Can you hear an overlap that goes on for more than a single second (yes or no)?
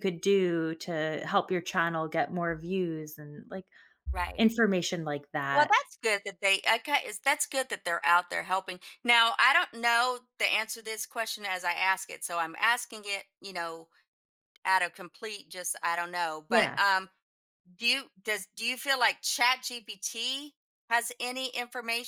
no